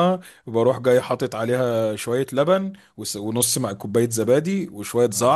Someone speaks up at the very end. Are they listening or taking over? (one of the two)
listening